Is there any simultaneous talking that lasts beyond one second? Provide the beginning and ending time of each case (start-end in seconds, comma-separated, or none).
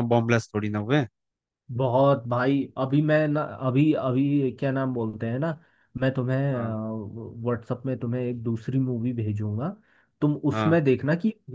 none